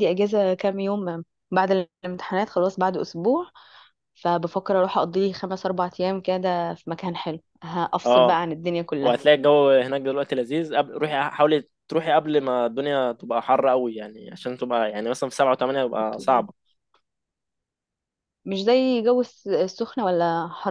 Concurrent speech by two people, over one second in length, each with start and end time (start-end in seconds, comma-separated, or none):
none